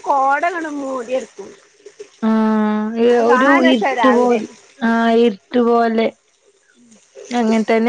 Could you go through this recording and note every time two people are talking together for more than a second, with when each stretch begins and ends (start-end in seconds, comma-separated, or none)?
none